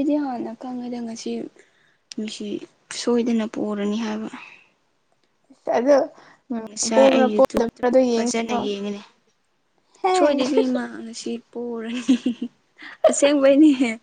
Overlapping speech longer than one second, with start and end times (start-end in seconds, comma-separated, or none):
6.7-8.6